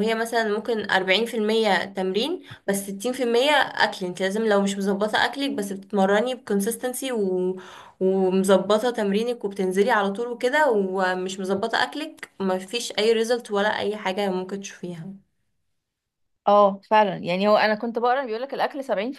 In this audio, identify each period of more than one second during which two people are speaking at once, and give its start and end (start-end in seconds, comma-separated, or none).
none